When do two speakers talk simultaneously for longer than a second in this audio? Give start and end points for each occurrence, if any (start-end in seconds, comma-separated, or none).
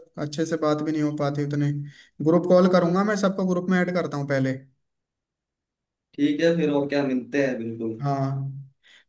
none